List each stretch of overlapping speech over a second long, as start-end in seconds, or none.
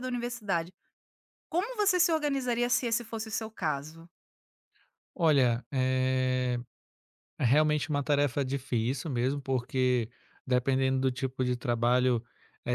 none